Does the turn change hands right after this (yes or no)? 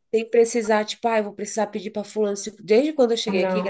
no